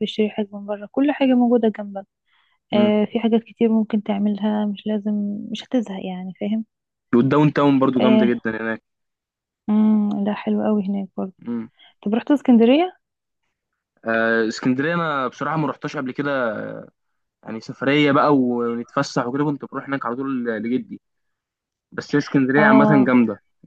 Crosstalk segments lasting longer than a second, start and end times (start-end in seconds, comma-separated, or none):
none